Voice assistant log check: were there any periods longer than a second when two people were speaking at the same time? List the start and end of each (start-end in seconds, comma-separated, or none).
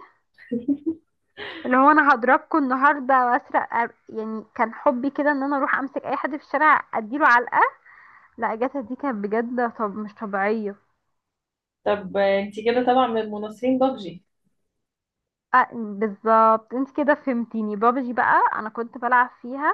none